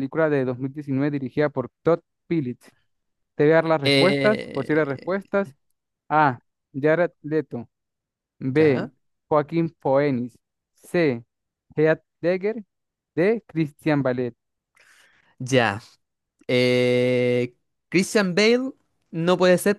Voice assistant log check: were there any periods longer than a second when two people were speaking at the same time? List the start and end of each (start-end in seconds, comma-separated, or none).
3.8-5.3